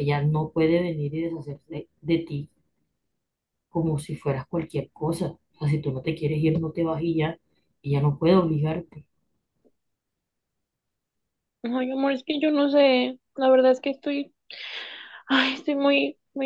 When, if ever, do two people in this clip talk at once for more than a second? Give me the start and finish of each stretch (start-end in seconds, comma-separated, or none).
none